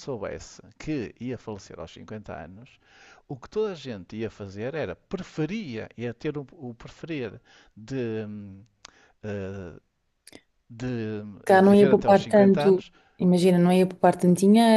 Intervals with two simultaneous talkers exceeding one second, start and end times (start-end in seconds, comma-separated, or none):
11.4-12.8